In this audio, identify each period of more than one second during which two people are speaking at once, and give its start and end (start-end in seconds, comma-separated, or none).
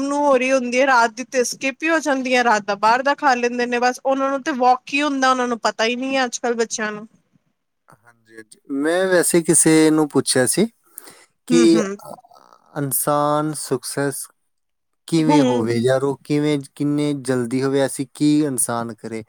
none